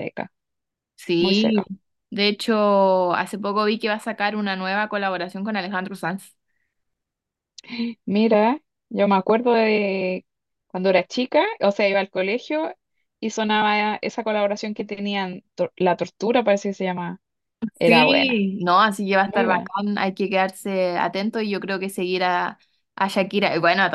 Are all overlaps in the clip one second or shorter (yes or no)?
yes